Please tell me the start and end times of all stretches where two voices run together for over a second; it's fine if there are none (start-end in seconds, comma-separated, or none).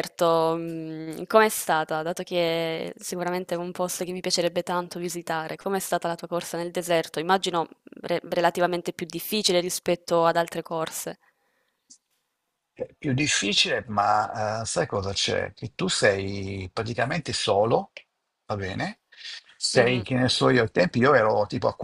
none